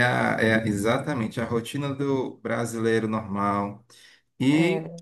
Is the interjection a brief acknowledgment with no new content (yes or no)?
yes